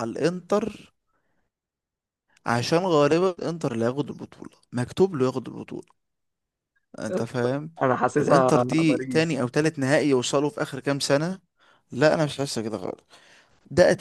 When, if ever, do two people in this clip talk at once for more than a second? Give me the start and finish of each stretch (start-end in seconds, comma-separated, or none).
8.2-9.4